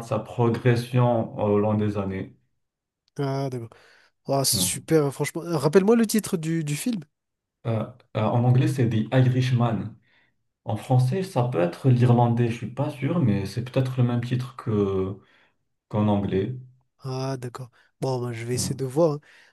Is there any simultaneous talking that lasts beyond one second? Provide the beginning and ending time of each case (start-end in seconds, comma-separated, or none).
none